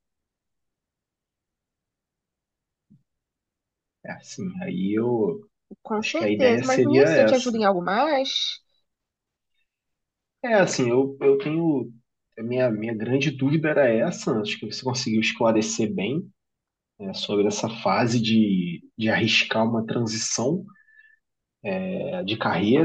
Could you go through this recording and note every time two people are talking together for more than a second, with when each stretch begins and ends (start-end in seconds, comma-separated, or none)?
6.0-7.6